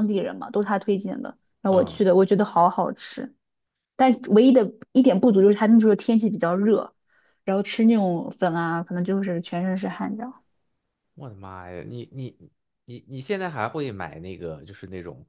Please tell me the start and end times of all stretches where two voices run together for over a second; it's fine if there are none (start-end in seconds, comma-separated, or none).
none